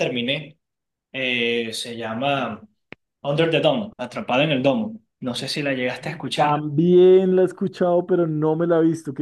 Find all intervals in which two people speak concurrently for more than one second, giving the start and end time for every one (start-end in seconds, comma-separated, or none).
none